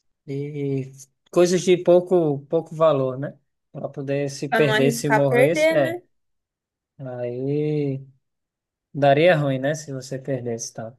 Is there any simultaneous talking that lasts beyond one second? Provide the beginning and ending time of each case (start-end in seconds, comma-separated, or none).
4.5-6.0